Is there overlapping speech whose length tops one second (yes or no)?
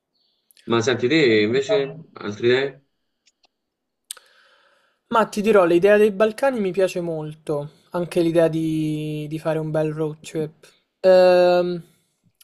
no